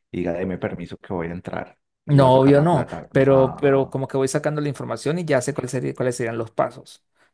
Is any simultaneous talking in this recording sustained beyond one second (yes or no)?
yes